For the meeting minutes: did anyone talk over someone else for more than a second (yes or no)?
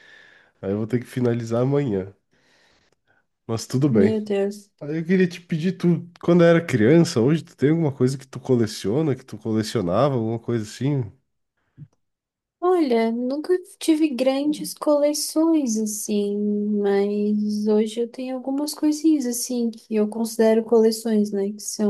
no